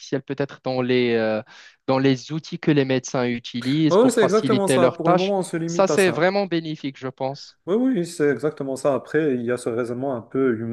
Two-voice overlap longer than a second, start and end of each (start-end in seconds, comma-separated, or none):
3.9-6.3